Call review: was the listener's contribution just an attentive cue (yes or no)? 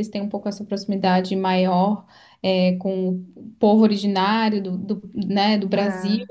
yes